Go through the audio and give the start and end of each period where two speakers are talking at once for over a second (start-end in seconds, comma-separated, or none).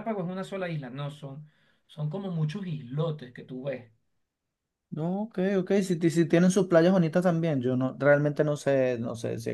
none